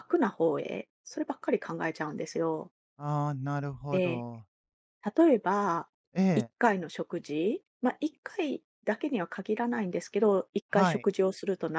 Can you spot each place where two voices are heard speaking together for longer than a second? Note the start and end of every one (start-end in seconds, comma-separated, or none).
none